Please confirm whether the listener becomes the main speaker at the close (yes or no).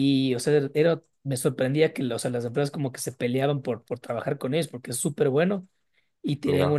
no